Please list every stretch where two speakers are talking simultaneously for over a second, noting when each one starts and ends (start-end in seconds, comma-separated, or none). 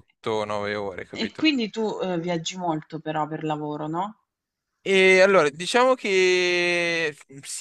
none